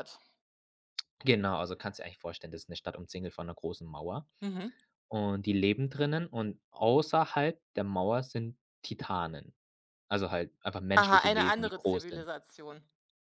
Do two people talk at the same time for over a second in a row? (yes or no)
yes